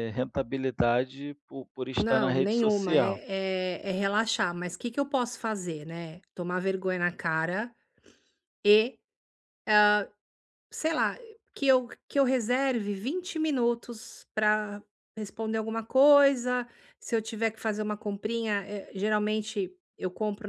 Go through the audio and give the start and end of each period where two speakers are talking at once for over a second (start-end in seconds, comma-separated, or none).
1.9-3.2